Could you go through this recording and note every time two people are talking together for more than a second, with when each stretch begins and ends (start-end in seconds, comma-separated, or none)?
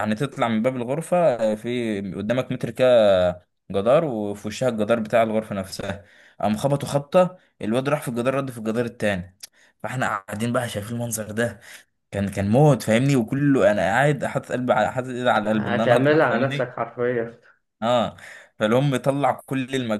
15.5-16.7